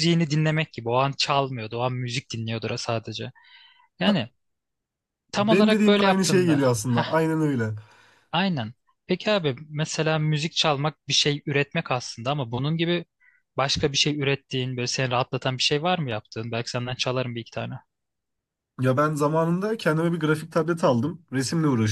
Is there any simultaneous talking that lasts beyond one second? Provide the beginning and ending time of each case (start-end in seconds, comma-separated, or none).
5.4-6.6